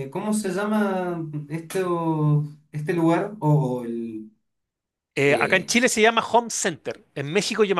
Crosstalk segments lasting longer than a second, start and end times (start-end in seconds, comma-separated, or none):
none